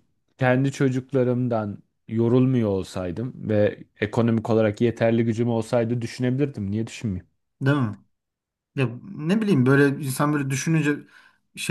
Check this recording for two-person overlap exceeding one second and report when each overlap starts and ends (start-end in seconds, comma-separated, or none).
none